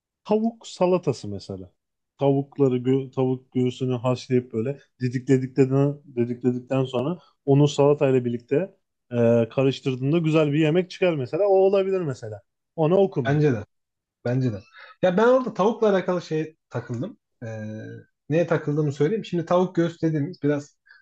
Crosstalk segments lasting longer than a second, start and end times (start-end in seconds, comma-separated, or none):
none